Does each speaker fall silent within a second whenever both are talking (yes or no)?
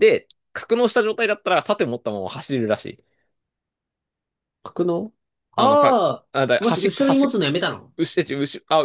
no